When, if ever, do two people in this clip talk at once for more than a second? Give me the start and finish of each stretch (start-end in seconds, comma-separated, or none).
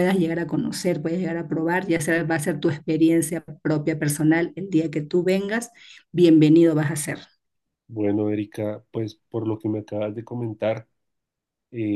none